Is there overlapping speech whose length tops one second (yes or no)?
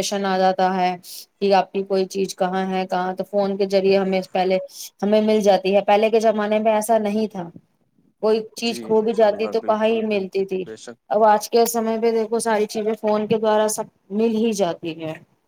yes